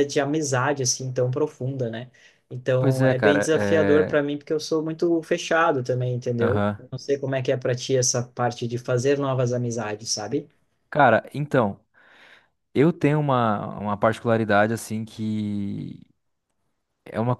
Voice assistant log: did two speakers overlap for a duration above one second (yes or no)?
yes